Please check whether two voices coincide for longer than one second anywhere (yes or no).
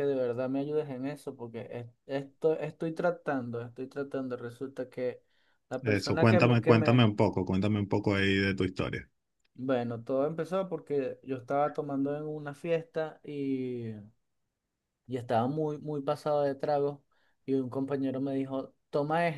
yes